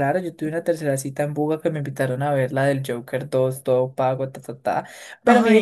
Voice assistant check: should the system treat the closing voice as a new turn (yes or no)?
no